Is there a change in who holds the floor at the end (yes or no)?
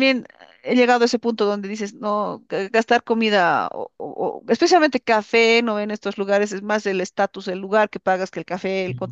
no